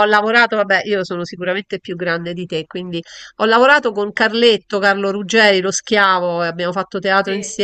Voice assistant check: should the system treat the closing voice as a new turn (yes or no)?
no